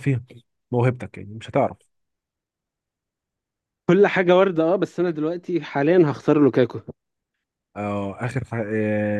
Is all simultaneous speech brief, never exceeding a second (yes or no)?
yes